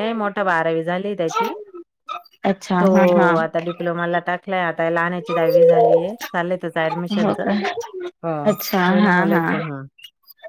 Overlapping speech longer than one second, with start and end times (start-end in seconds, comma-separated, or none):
none